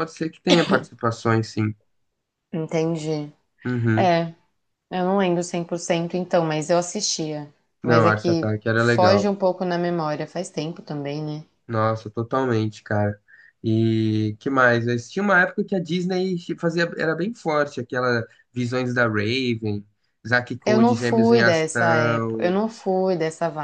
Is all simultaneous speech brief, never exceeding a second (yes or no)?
no